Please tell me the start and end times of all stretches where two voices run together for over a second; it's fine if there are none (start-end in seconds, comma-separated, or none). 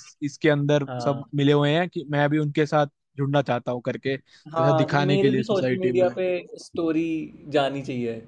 4.5-6.1